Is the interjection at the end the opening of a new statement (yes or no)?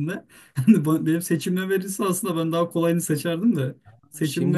no